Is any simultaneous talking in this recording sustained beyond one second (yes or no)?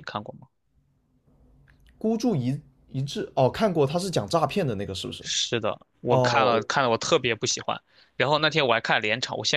no